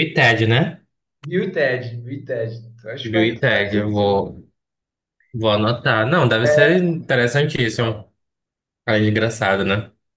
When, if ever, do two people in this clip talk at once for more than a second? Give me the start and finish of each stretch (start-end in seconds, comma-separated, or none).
3.0-4.2